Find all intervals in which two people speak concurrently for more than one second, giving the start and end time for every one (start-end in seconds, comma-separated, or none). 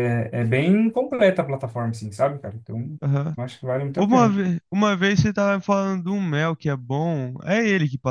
none